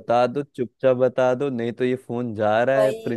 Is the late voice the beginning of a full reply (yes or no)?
yes